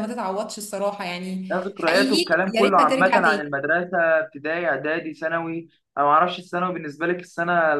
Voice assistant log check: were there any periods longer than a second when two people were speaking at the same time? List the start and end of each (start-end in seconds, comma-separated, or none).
1.5-3.6